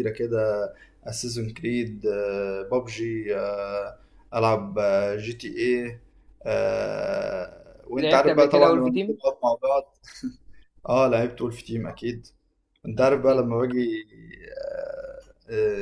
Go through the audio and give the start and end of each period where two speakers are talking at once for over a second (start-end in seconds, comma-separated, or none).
8.0-9.2